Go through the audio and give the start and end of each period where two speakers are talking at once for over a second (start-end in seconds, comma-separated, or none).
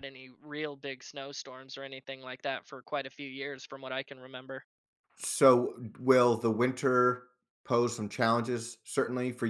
none